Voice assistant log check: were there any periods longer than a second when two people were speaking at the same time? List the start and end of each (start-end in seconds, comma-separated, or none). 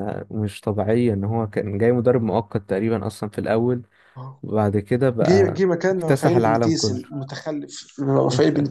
5.2-7.0